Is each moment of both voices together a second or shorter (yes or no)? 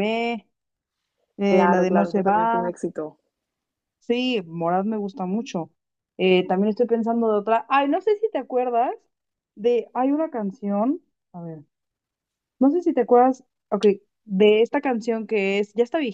no